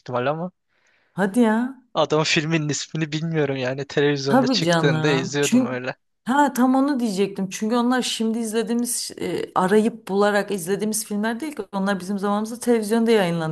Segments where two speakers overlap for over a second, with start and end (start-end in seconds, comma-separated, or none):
4.3-5.8